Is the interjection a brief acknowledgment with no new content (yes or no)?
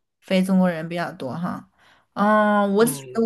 yes